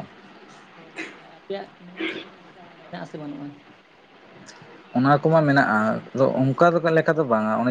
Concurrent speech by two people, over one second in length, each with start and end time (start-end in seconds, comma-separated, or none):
none